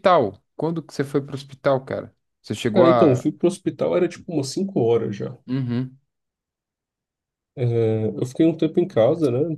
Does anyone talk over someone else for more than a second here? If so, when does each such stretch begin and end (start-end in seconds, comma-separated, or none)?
none